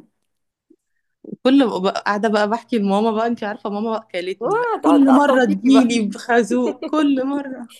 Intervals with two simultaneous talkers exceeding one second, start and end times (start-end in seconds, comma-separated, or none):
4.4-6.0